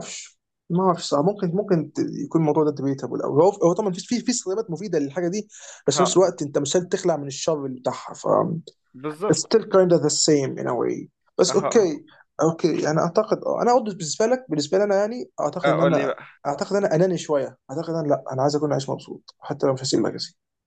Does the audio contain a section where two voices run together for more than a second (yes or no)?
no